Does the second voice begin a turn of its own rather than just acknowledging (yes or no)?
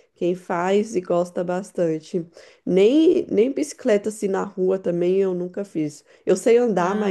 no